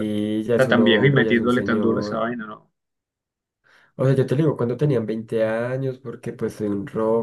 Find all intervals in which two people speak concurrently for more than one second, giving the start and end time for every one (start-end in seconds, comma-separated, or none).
0.5-2.3